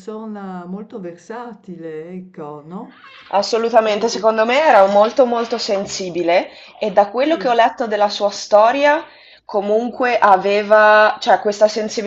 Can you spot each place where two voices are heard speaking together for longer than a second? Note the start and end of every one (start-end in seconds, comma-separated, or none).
none